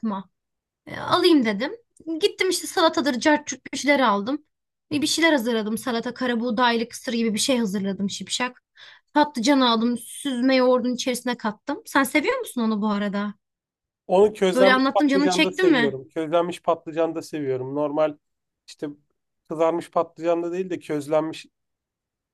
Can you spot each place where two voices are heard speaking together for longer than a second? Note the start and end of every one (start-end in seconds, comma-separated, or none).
14.5-16.0